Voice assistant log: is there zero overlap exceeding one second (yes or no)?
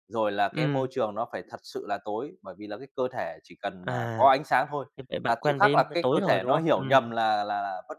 no